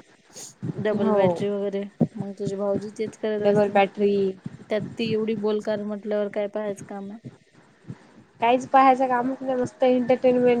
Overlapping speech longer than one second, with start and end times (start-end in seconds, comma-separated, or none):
none